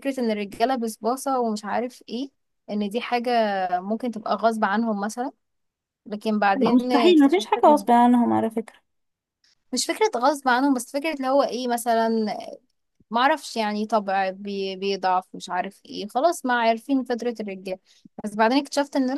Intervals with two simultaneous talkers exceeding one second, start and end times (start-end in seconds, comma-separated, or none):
6.5-7.9